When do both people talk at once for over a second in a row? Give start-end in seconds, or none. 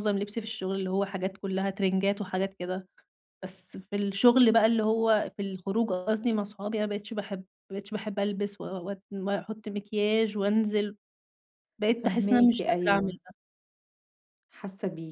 12.0-13.2